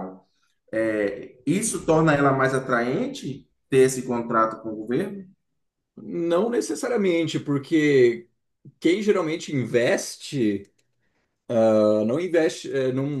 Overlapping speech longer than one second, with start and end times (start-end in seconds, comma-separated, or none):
none